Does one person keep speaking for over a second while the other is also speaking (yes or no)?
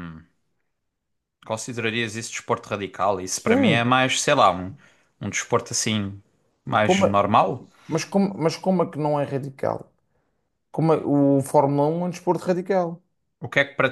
no